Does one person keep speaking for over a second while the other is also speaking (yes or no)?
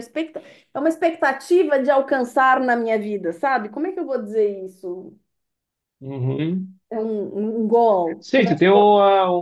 no